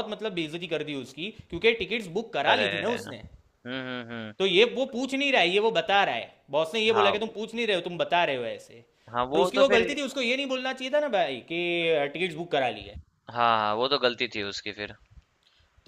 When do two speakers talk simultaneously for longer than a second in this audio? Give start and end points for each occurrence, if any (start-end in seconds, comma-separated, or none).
none